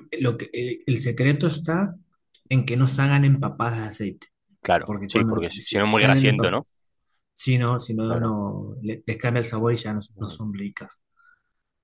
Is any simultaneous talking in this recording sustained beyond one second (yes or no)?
yes